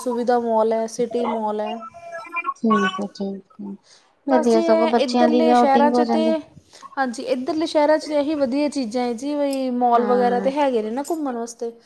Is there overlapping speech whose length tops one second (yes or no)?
yes